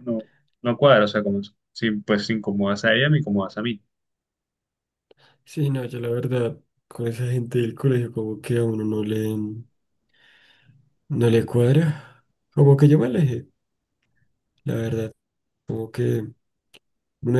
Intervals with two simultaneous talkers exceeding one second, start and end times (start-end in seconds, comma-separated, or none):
none